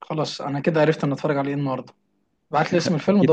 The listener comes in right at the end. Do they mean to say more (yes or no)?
no